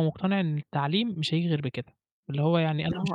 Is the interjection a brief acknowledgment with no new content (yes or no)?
yes